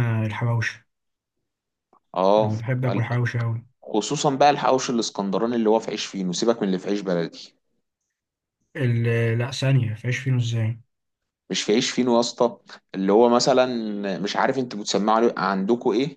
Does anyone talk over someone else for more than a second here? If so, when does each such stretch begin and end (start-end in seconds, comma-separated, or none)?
none